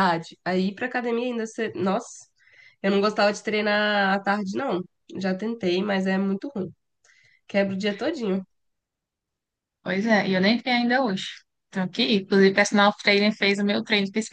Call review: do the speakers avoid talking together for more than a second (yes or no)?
yes